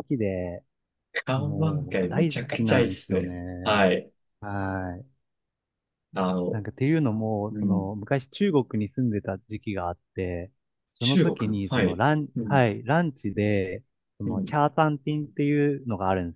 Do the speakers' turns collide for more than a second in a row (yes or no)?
yes